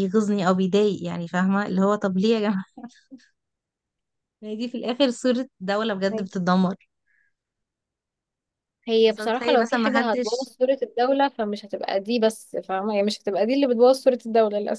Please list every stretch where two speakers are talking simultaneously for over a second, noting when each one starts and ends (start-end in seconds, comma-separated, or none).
9.0-10.5